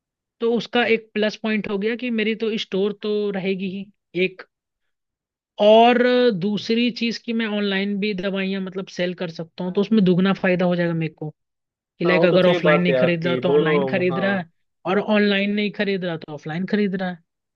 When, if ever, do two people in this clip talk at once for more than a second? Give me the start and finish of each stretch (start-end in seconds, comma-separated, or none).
12.1-14.4